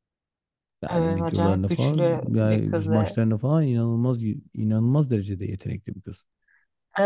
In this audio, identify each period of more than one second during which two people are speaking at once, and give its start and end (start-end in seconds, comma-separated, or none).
0.9-3.2